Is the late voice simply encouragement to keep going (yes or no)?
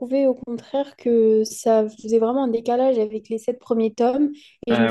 yes